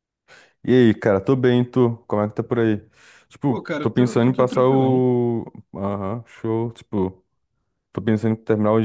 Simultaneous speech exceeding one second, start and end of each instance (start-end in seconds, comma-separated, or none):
3.5-5.1